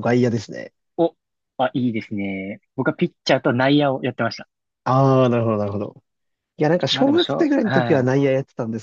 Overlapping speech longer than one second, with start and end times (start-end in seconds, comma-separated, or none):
6.9-8.1